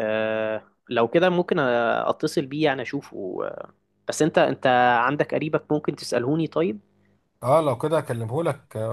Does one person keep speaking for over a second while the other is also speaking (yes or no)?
no